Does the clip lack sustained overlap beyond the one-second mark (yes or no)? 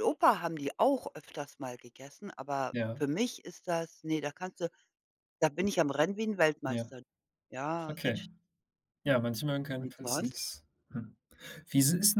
yes